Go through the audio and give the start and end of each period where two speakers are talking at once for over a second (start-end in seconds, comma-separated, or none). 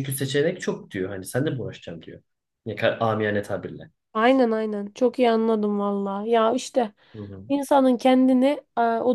none